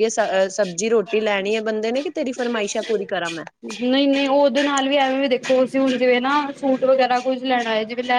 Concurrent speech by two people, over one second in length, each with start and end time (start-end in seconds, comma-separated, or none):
none